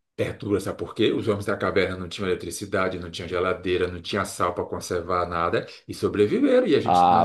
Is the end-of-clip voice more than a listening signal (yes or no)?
yes